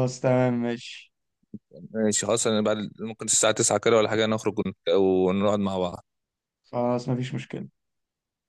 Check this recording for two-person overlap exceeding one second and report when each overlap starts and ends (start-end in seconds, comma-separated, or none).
none